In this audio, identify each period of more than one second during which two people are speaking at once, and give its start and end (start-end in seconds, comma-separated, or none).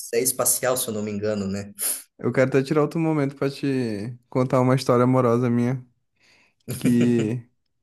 none